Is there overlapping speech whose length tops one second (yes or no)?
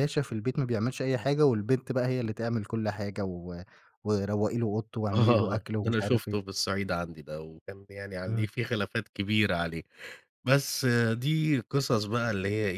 yes